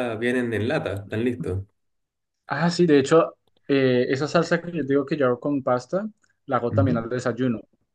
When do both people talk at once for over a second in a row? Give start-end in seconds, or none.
none